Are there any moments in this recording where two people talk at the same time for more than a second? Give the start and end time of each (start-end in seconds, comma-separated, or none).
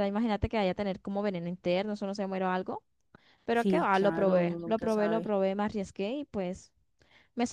3.5-5.3